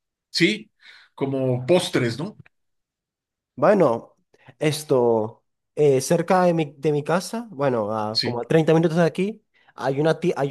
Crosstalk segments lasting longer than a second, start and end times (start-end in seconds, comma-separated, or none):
none